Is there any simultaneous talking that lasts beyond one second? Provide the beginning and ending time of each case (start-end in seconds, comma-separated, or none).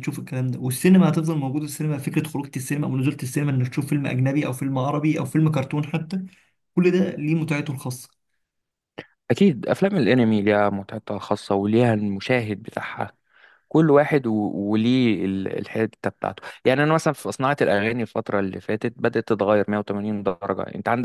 none